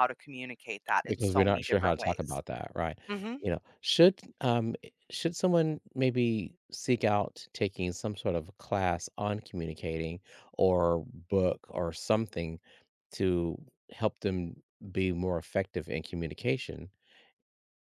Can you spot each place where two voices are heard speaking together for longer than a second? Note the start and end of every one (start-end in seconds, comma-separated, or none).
1.1-2.4